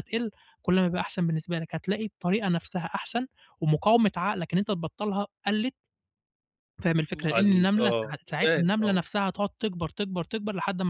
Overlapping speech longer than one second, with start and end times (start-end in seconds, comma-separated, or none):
7.1-9.0